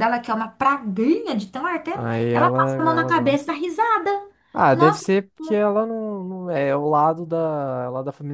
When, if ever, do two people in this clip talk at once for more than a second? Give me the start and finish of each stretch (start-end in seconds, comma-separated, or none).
1.9-3.5